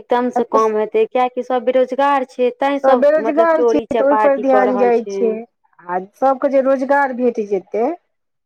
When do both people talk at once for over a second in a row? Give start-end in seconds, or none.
3.1-5.0